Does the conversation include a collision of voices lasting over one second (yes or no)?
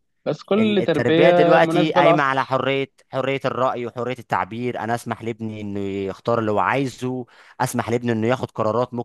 yes